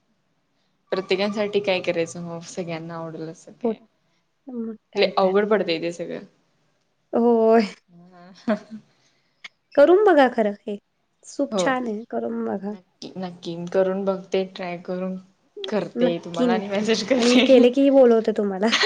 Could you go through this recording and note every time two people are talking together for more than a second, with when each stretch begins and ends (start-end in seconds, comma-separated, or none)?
16.0-17.4